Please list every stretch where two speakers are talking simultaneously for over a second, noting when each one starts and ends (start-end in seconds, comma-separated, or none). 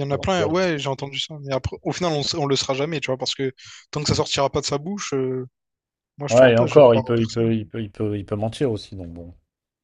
6.3-7.5